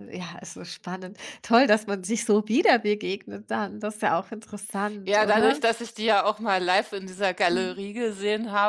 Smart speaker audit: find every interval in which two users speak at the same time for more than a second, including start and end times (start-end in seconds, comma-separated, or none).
none